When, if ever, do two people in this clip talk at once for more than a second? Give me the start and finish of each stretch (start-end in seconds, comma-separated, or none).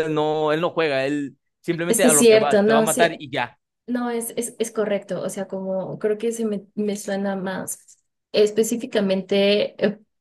1.9-3.2